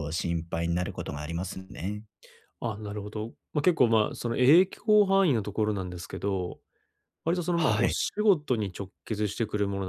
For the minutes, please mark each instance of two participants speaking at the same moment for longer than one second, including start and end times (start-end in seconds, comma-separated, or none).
none